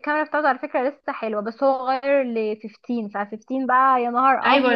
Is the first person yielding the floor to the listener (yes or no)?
yes